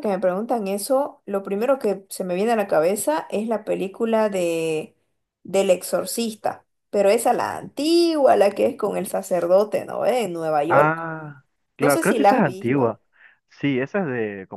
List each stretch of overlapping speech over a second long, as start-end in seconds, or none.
11.8-13.0